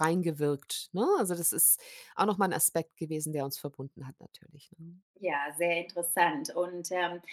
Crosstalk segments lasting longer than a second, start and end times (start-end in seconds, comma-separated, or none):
none